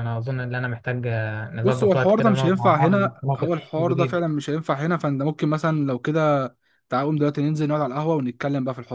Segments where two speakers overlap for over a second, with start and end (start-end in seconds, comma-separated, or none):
1.6-4.2